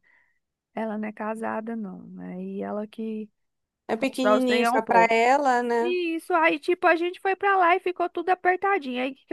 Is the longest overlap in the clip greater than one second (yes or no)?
yes